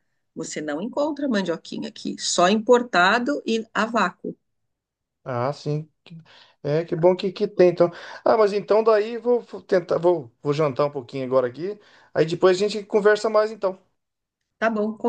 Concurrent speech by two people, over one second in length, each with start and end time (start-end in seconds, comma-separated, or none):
none